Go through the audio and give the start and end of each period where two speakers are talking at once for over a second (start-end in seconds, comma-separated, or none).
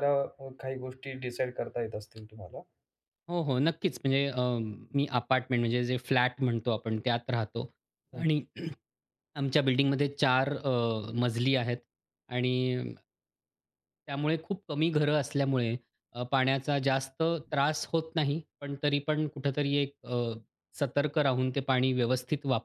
none